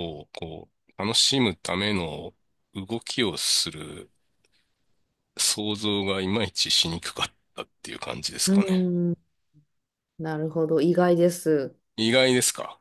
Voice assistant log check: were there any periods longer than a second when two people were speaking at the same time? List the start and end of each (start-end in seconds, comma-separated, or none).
none